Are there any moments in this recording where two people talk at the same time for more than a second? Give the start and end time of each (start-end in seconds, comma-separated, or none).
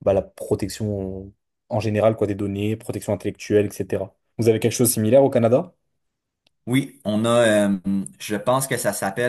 none